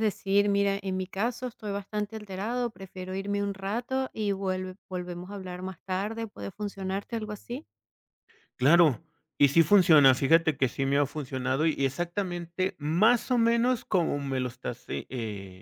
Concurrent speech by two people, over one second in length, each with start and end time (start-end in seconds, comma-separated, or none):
none